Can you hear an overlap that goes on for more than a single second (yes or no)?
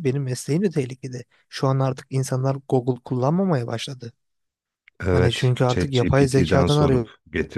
yes